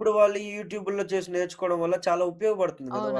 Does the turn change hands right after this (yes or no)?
yes